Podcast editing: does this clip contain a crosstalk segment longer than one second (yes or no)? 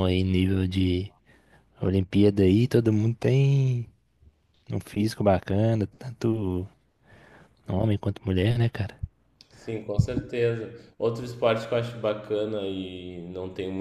no